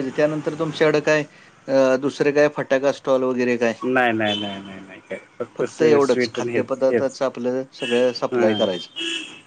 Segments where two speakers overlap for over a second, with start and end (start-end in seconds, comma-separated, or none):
5.7-7.2